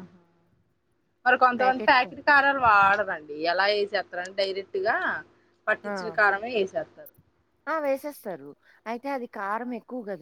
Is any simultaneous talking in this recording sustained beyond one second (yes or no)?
no